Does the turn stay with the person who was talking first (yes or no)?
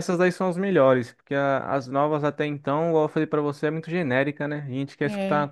yes